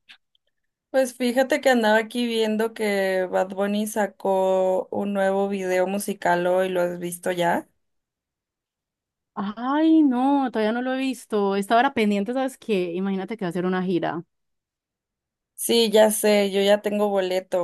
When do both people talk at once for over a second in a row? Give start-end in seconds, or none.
none